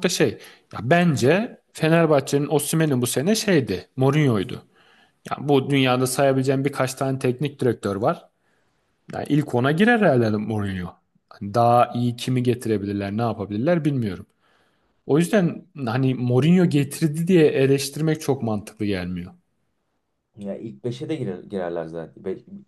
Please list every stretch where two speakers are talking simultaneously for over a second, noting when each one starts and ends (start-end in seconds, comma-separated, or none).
none